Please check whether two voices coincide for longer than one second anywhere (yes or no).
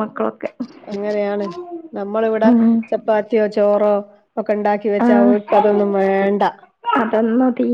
no